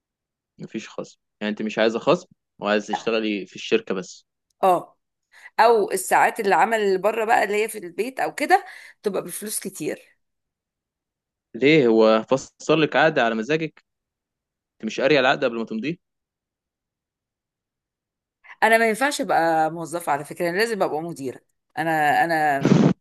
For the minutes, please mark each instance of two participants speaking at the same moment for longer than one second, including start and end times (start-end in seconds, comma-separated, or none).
none